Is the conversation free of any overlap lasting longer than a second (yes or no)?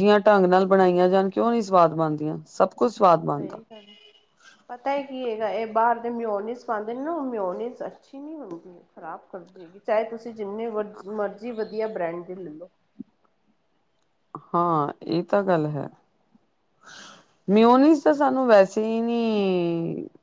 yes